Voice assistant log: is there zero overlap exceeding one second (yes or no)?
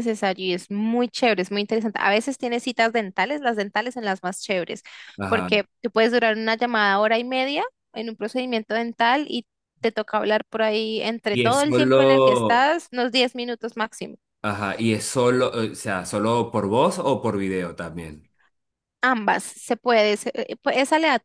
no